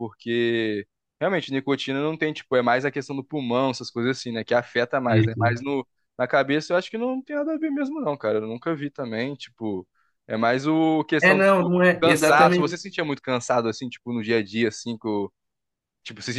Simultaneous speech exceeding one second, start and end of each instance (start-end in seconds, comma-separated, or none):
11.2-12.8